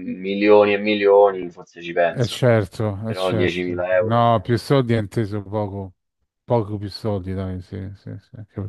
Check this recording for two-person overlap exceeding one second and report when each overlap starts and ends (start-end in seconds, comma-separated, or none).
3.0-4.5